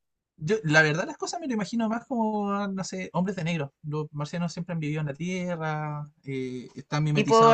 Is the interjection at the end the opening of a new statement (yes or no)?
no